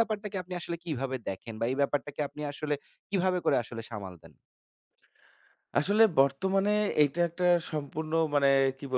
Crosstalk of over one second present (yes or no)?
no